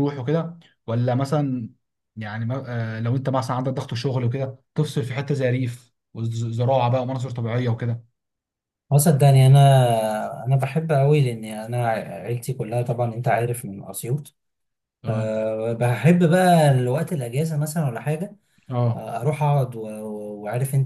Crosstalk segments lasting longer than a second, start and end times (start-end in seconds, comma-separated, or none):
none